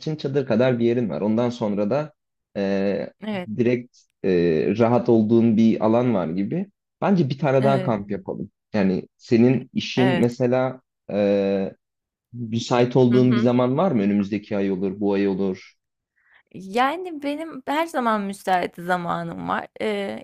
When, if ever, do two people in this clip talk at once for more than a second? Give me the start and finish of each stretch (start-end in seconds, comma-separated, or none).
none